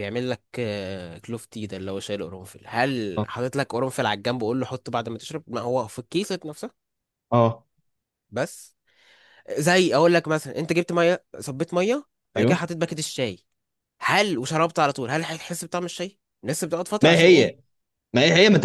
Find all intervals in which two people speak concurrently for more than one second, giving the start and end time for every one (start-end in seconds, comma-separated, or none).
none